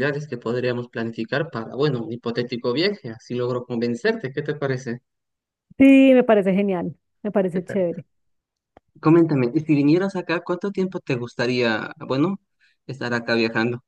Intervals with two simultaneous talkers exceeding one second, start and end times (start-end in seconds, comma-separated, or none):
none